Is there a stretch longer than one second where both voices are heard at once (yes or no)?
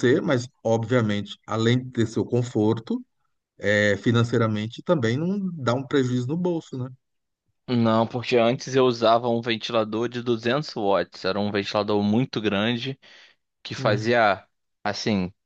no